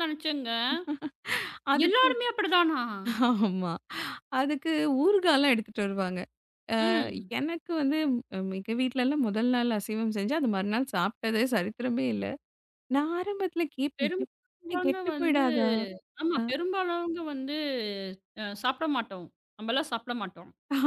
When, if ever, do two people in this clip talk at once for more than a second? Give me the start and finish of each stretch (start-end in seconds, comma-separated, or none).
14.0-15.4